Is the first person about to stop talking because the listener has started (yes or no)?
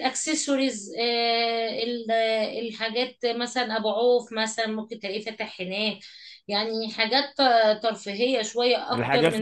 yes